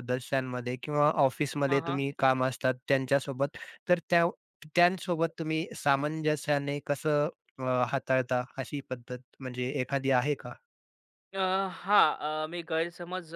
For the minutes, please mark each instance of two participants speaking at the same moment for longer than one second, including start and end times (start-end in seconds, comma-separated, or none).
none